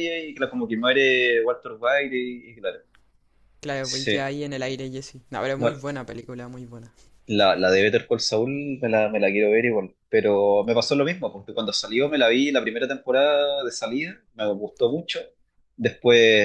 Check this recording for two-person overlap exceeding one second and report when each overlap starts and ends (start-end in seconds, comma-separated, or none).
none